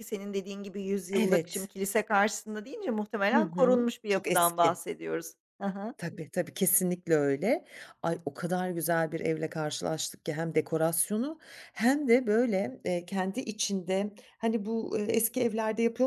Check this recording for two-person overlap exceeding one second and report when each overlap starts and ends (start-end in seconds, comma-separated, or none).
3.3-4.8